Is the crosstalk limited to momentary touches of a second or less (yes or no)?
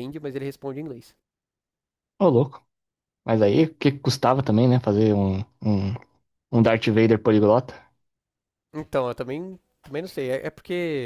yes